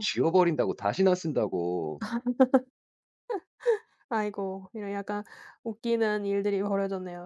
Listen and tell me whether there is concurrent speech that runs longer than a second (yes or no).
no